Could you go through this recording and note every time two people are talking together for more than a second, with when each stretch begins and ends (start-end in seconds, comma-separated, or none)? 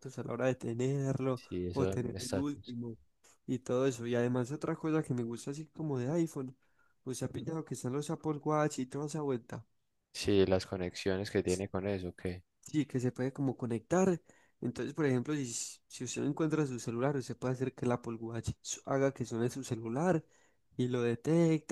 1.3-2.8